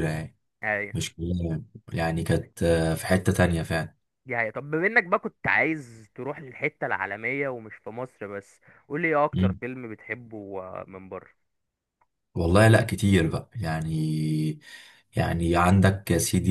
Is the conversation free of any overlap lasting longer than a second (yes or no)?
yes